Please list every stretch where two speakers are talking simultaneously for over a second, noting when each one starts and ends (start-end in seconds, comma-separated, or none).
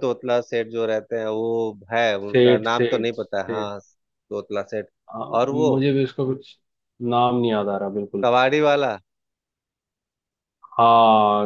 2.3-3.7